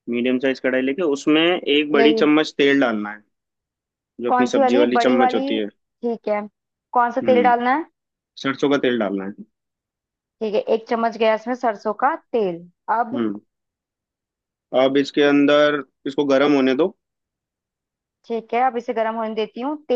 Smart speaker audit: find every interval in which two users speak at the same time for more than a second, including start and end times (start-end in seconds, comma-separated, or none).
4.3-5.7